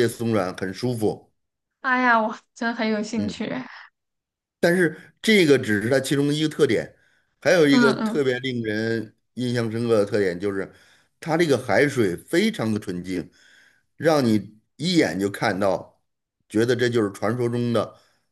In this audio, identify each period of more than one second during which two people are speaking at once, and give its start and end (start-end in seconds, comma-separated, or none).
none